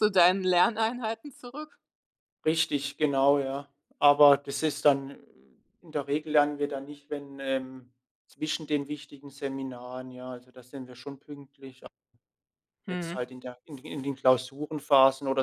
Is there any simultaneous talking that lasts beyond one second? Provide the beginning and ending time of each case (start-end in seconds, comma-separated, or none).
none